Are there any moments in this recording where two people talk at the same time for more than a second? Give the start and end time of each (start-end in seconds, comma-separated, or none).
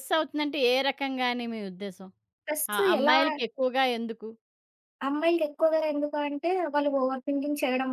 none